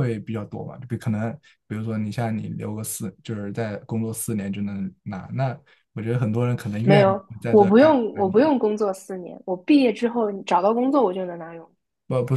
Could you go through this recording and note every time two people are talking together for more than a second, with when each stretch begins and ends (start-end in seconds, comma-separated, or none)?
6.8-8.5